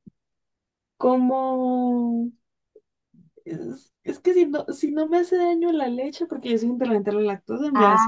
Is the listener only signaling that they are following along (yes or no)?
yes